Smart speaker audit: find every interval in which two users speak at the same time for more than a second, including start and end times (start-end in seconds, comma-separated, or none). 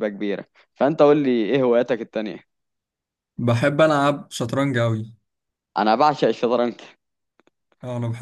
none